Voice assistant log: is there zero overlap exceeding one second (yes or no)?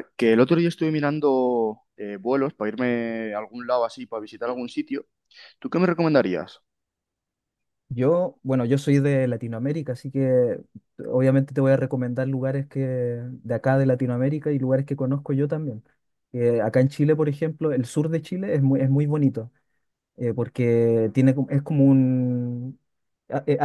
yes